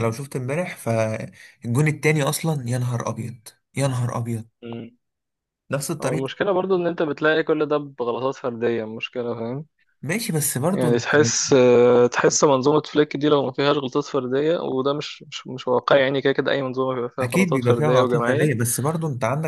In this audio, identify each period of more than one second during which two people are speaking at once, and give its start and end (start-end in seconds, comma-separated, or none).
17.2-18.5